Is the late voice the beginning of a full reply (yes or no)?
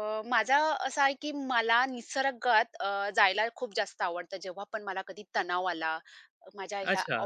yes